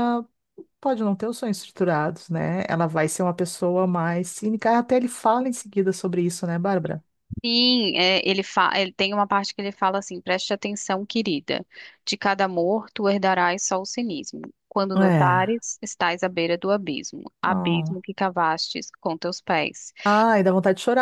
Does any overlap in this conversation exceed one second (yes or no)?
no